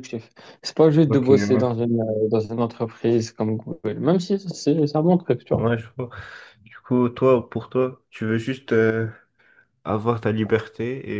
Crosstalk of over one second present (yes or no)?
no